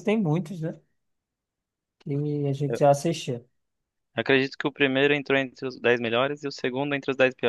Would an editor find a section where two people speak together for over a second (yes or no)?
no